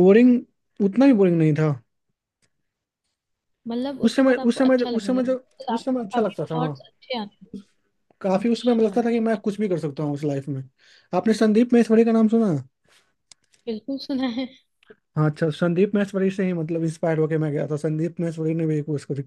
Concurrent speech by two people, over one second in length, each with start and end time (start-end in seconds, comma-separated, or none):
4.0-6.8